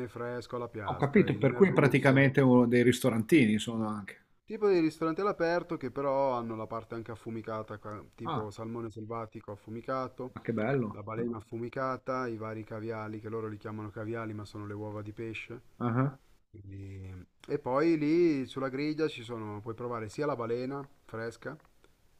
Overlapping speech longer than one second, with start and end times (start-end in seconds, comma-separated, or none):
0.8-2.3